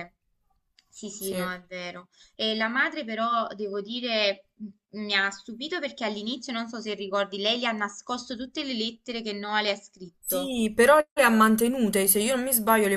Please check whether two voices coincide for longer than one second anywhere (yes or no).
no